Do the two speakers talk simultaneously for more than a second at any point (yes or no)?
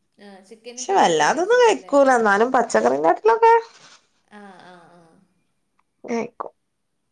yes